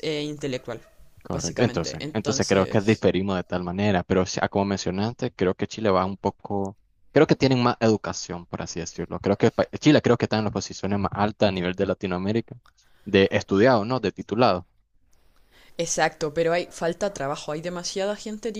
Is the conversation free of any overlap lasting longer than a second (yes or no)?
no